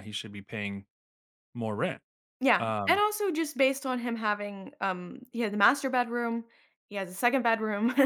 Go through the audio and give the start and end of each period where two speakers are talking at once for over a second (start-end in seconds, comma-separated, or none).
none